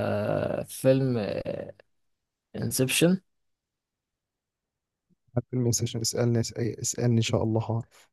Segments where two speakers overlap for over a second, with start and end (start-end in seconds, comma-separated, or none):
none